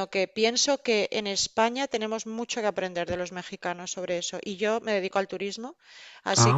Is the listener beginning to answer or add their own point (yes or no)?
no